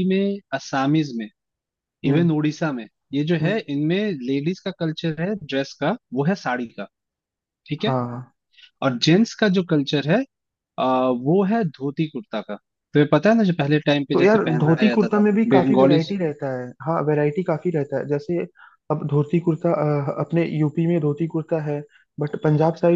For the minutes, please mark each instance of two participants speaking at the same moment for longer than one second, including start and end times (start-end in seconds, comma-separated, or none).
14.1-16.1